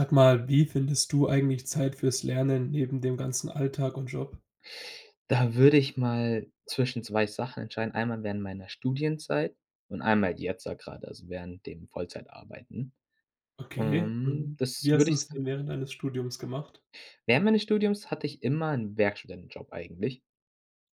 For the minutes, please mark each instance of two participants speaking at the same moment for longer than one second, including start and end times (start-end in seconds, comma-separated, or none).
13.8-15.4